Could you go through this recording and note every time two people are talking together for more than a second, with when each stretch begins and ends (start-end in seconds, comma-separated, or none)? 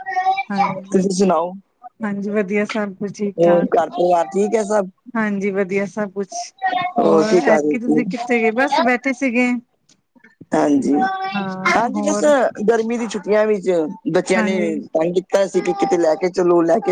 7.3-8.8